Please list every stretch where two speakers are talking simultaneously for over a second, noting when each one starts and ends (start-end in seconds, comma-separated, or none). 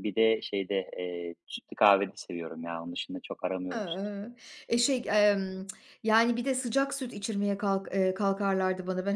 none